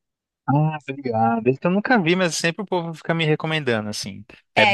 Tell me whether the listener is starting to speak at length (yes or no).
yes